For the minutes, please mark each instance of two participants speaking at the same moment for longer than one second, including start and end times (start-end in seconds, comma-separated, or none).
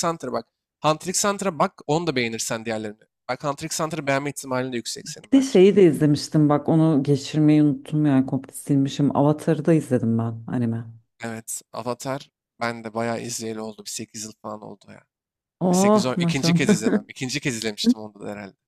15.7-16.9